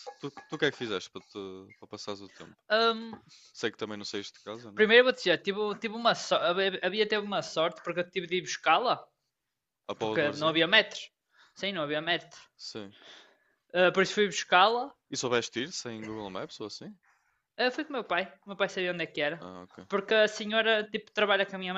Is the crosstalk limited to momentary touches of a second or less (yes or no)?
yes